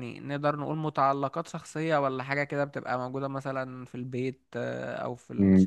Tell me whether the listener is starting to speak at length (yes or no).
yes